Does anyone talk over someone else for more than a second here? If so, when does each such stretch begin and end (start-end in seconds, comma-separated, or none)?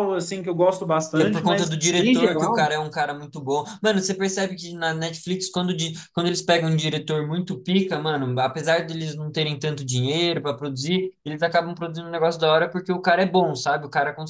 1.1-2.7